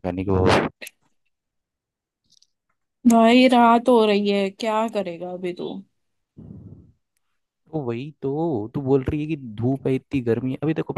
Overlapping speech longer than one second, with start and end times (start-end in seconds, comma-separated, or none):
none